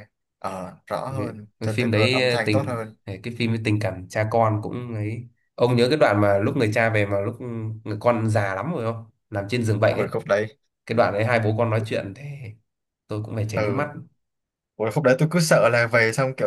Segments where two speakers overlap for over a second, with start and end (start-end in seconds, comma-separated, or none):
1.1-3.0